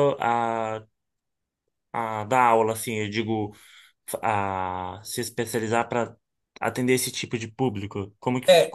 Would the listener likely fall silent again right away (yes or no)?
no